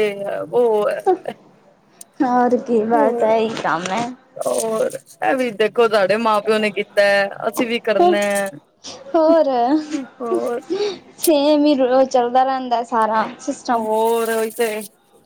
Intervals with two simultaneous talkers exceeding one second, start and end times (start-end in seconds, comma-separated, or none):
none